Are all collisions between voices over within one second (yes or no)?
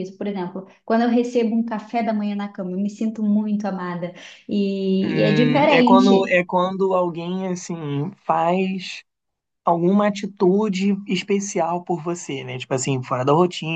no